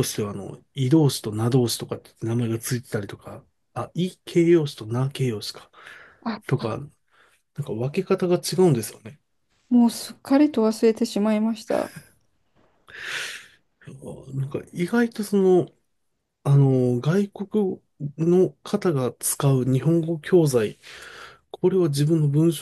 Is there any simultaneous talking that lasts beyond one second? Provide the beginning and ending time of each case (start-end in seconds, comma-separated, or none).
none